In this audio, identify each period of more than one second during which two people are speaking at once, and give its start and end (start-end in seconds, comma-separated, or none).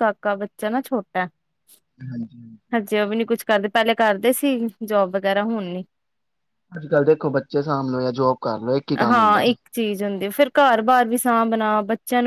none